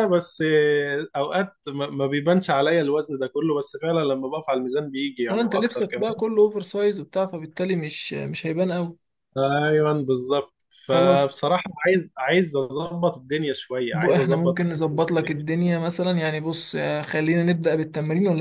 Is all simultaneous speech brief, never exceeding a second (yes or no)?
no